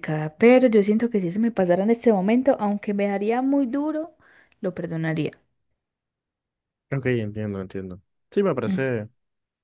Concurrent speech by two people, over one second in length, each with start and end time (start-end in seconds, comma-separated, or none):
none